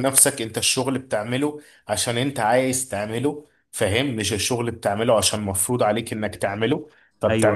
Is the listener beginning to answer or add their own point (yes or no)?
no